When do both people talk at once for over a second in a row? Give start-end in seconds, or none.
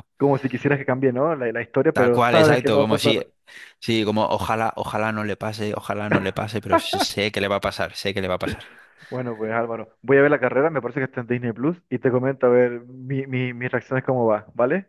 1.9-3.2